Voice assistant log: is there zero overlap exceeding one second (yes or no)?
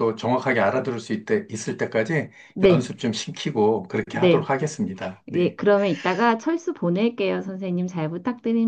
yes